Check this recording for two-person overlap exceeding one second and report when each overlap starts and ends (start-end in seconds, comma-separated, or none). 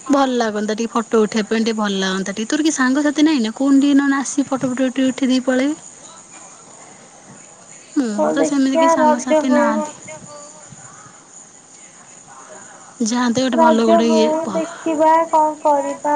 8.2-9.9